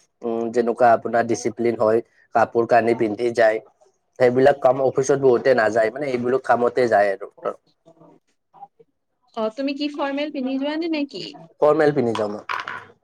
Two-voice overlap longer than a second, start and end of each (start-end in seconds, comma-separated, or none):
none